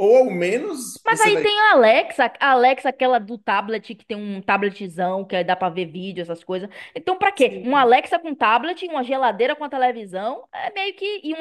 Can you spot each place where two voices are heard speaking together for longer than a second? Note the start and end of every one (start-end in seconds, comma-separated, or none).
none